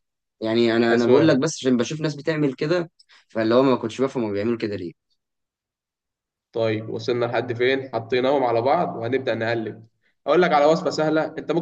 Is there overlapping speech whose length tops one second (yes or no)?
no